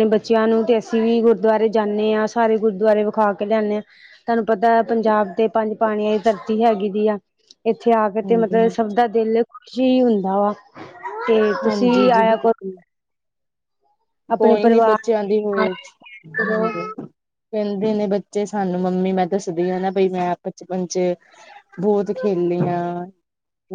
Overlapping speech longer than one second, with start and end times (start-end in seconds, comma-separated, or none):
14.4-15.7